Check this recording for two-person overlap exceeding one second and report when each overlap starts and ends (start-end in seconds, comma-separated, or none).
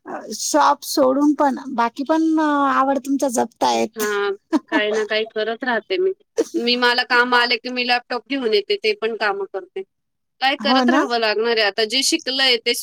none